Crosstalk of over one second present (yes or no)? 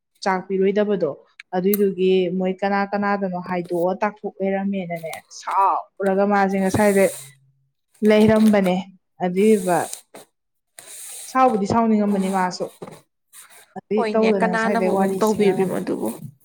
yes